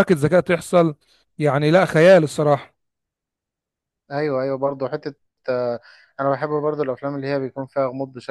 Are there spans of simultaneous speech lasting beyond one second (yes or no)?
no